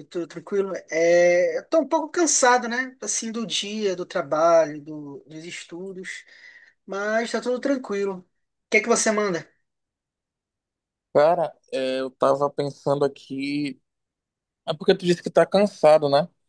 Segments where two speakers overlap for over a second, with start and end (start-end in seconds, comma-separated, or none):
none